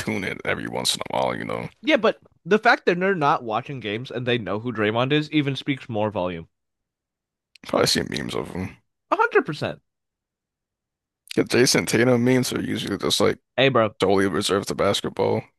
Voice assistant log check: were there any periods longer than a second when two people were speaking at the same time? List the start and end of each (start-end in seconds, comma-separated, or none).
none